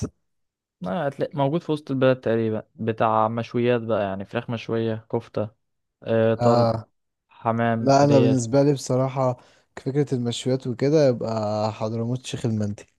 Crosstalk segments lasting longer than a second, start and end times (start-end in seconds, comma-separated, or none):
none